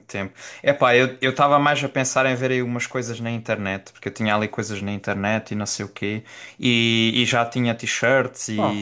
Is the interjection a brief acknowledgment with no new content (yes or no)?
no